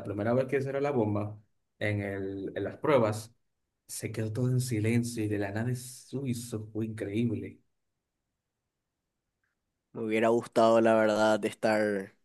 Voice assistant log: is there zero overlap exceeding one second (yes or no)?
yes